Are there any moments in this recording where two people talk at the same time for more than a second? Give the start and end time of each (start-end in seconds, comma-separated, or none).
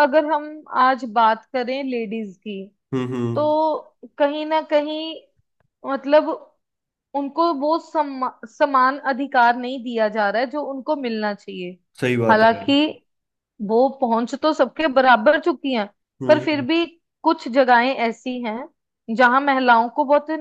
none